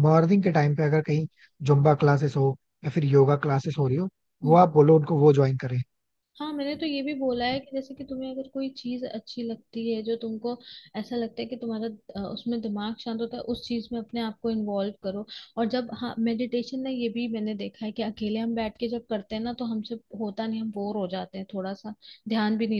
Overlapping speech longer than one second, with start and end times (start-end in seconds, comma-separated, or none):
none